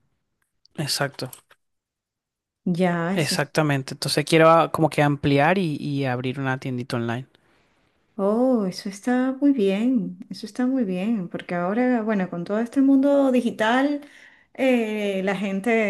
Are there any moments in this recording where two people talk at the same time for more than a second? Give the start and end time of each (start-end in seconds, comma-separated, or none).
none